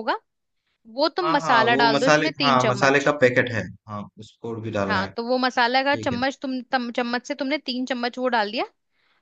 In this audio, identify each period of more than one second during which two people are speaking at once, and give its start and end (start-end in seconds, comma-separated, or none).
1.2-3.1